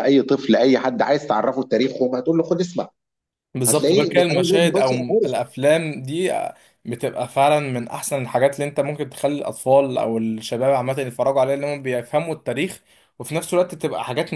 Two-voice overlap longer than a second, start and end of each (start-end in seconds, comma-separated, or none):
3.7-5.3